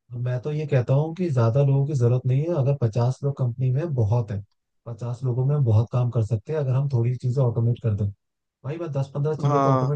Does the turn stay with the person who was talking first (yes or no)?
yes